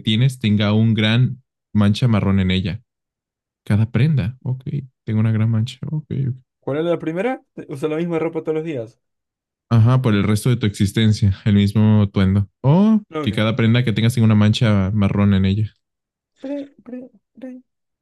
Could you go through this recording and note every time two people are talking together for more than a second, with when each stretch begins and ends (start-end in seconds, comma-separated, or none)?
none